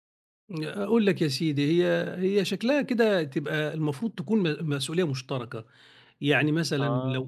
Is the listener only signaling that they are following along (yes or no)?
yes